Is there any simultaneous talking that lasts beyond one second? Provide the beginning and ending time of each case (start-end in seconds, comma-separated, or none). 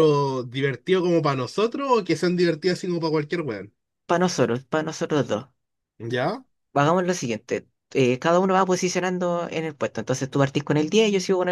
none